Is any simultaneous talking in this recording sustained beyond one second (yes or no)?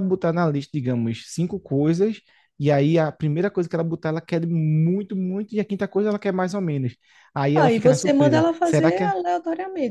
yes